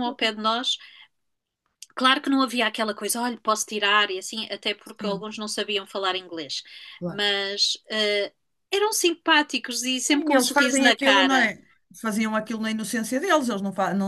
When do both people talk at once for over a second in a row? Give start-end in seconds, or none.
9.9-11.5